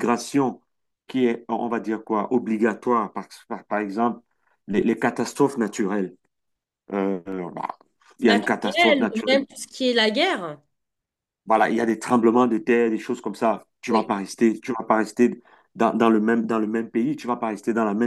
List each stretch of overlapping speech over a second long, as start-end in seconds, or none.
8.2-9.4